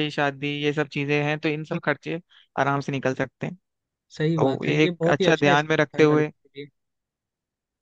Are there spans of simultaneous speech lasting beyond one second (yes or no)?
yes